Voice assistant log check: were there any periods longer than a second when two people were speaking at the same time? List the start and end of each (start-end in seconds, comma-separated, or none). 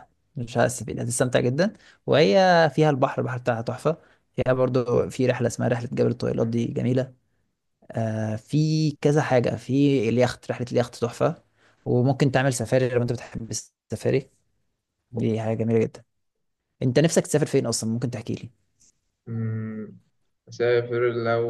none